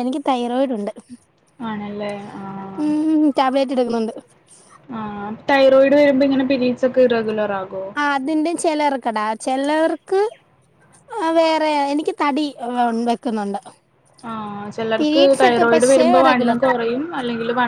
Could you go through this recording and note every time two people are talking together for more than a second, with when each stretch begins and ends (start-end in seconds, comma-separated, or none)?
15.0-16.6